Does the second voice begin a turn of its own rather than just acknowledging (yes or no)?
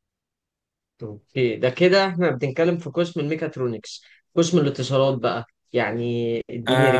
yes